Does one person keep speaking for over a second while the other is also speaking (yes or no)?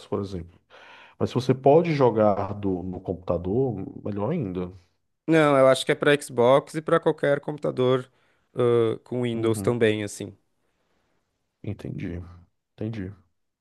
no